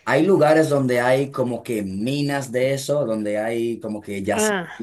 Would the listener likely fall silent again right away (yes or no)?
yes